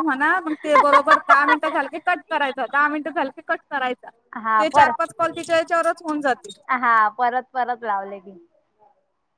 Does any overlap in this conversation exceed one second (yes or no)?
no